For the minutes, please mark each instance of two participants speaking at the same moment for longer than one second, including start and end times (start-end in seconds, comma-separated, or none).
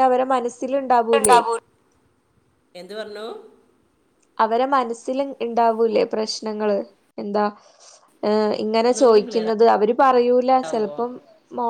none